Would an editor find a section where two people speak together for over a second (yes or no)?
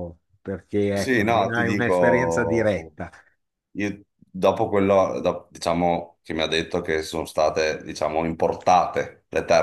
yes